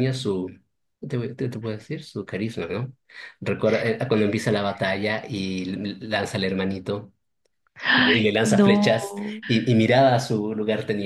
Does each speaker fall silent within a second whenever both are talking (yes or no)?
no